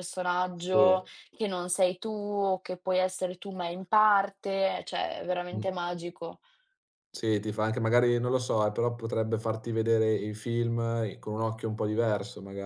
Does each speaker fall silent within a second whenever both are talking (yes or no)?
yes